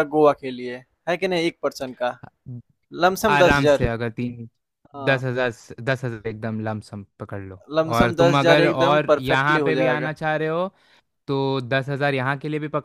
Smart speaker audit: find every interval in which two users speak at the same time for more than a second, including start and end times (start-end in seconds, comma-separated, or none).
8.0-10.1